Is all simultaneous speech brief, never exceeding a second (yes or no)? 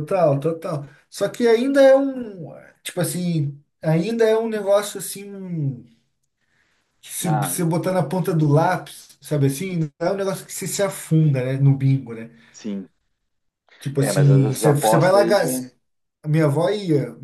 no